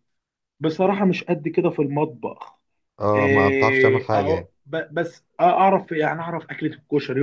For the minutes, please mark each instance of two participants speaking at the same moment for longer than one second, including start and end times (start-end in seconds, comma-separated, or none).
3.2-4.5